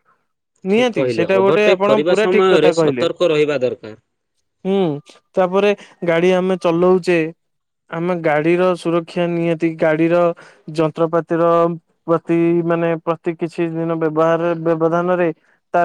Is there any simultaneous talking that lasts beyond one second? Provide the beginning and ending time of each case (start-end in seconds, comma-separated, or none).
0.7-3.1